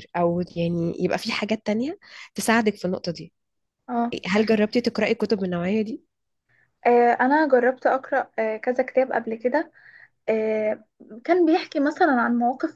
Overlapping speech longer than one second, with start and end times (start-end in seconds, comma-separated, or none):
none